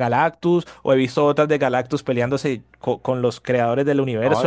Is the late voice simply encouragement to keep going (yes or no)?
no